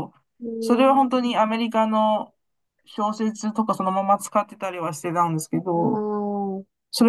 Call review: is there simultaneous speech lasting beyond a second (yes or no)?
no